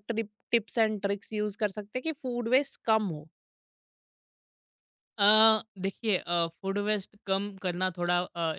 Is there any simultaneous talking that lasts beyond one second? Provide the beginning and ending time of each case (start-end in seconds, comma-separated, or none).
none